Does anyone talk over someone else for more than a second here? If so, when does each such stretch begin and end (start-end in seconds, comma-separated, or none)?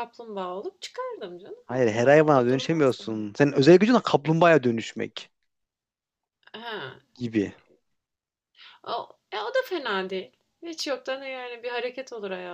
1.6-3.3